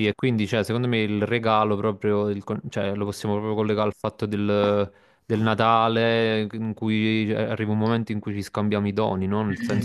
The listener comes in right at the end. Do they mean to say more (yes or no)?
yes